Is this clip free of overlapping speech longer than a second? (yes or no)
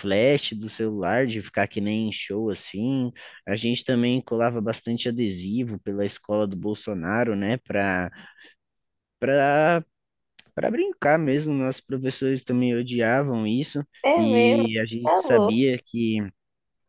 no